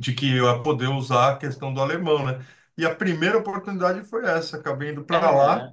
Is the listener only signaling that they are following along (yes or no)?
yes